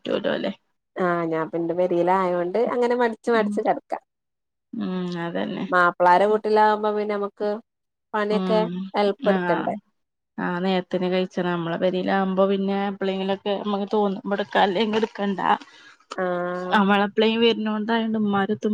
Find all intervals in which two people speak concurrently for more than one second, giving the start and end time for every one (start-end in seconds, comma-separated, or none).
none